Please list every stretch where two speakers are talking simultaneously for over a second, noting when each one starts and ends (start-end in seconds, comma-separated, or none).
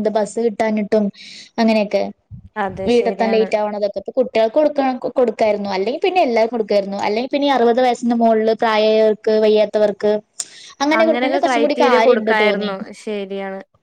11.0-12.7